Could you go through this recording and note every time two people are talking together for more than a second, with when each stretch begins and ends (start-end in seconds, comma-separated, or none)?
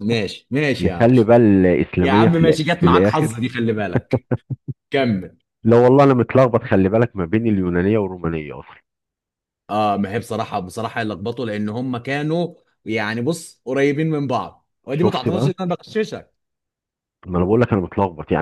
2.0-3.4